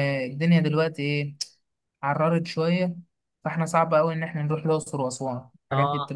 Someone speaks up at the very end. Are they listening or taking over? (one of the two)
listening